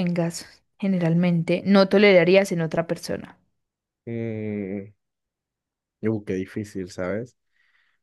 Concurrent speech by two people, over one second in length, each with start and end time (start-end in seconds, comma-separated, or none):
none